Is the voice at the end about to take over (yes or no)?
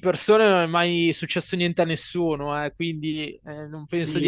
yes